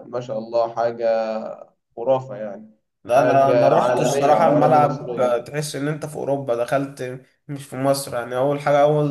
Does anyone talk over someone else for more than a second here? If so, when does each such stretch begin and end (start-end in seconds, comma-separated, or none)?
3.1-5.4